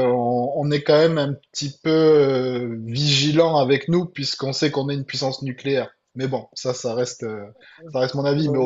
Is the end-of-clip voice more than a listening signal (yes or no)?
no